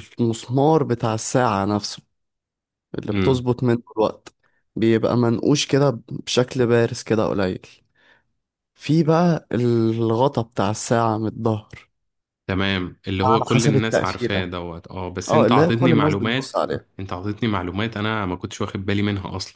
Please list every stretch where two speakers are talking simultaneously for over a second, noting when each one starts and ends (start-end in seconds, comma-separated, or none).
13.2-14.5, 15.3-16.6